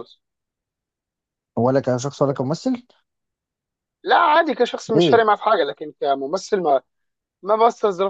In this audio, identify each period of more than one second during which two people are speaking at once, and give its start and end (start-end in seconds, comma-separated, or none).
none